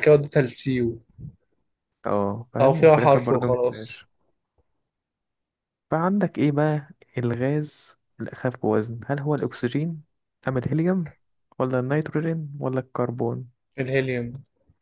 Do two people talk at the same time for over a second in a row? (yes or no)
yes